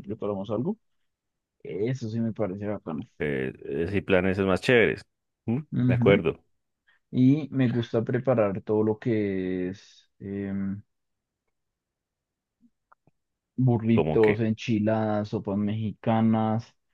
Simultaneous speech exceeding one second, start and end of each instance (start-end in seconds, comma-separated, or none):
none